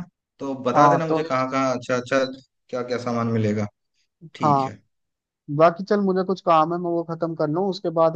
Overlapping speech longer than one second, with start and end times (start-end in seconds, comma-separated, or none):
none